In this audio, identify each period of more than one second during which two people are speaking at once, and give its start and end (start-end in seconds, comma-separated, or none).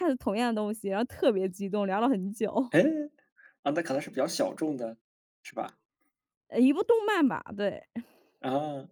none